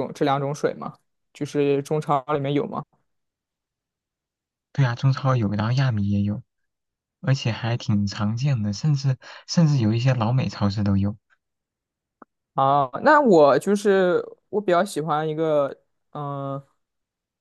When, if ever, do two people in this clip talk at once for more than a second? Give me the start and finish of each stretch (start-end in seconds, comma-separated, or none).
none